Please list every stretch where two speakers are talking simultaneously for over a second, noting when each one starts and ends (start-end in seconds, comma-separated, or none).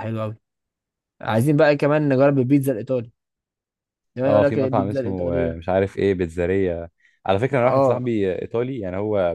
4.2-5.6